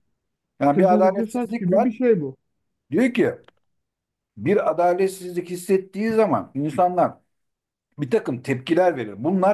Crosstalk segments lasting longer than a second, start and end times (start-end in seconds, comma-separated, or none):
0.7-1.9